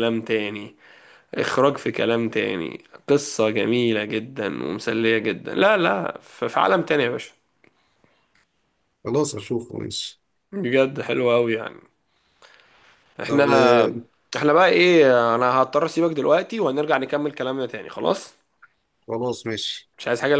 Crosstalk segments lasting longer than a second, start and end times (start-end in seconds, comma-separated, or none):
none